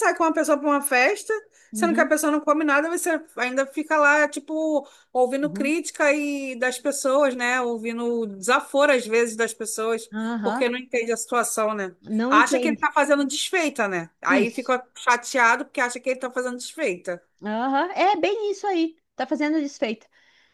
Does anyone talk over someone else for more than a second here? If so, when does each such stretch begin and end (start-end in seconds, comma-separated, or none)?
none